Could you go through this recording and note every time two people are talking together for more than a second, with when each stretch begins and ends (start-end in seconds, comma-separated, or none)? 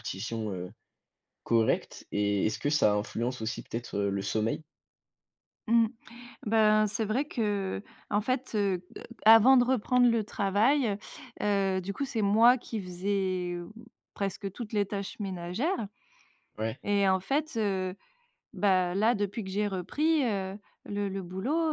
none